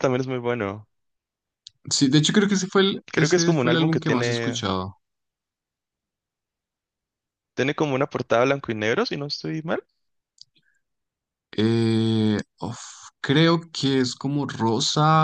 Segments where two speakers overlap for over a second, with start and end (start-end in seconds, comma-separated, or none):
3.1-4.7